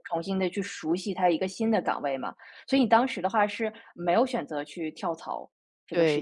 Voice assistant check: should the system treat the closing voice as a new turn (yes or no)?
yes